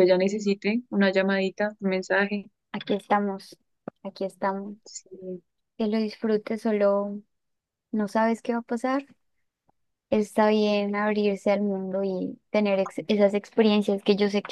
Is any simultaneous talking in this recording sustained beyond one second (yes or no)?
no